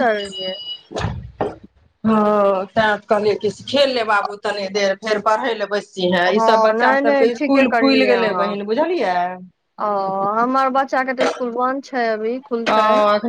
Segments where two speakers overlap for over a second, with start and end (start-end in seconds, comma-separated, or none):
6.4-8.5